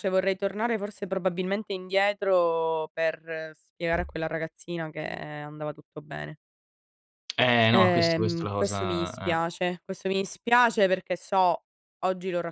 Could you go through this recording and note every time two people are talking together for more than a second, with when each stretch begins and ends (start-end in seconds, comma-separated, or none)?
7.7-9.5